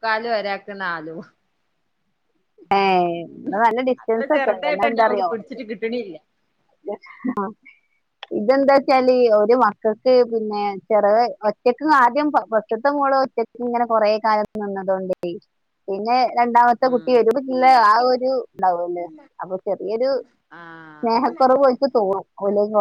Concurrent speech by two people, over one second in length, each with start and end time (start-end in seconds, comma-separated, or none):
4.0-5.3